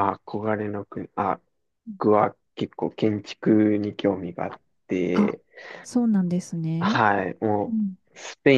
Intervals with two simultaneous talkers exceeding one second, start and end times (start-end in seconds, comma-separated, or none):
none